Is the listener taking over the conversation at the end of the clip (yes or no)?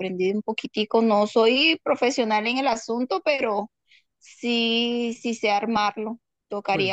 no